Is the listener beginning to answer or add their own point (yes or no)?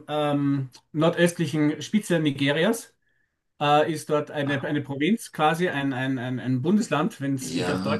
yes